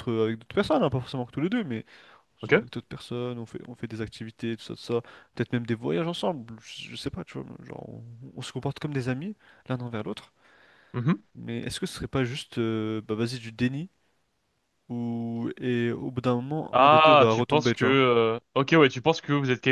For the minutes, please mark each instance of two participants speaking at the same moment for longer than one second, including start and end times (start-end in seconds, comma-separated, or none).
16.7-18.0